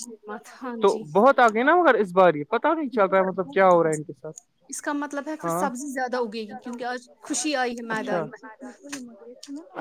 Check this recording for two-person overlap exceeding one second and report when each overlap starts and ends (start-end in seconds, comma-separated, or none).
2.8-4.1